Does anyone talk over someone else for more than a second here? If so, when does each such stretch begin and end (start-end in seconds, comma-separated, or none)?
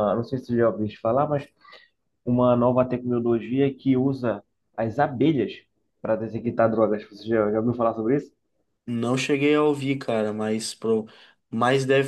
none